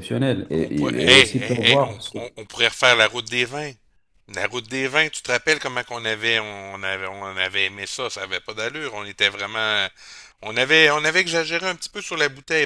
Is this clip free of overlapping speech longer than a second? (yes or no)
no